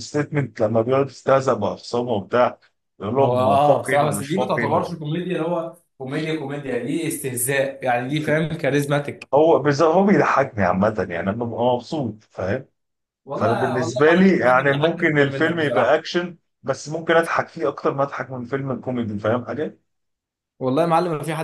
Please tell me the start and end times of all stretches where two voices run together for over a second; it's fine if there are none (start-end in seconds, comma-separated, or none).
3.2-5.0, 13.3-16.1